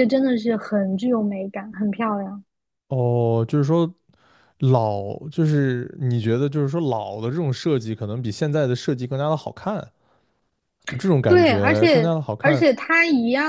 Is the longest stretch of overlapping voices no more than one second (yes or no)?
no